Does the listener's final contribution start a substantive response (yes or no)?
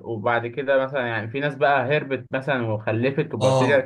yes